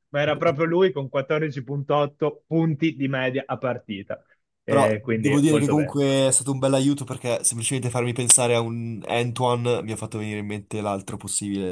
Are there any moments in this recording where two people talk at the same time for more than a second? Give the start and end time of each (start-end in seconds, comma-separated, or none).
4.7-6.0